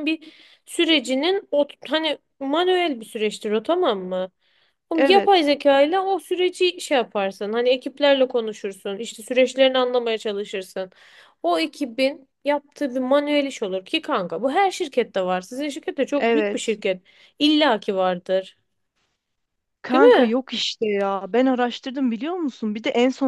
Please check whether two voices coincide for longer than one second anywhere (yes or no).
no